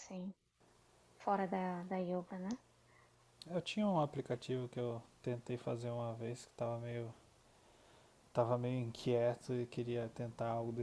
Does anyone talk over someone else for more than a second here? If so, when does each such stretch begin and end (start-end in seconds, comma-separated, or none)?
none